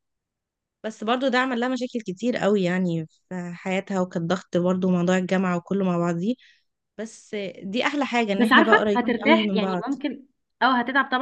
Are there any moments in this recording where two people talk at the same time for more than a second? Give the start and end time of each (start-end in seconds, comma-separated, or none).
8.3-9.8